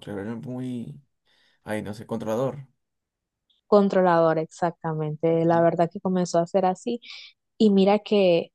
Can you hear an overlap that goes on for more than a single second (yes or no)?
no